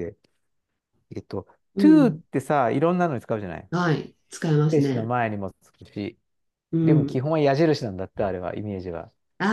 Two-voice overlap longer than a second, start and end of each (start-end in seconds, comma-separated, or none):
none